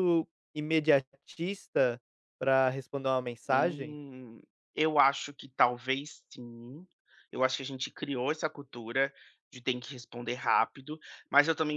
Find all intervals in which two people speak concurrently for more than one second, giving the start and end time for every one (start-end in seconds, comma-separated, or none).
none